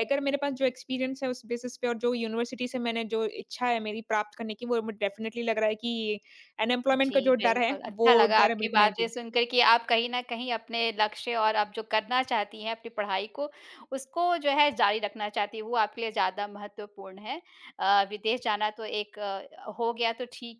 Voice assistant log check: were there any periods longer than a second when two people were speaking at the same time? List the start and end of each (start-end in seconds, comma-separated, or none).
7.0-9.1